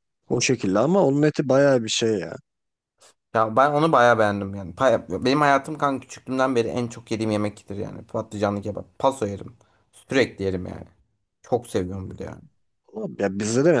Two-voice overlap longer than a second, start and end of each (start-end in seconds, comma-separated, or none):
none